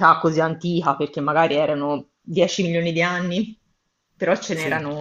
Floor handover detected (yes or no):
no